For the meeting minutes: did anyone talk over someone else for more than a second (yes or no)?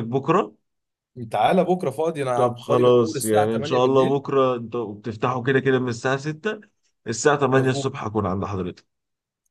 yes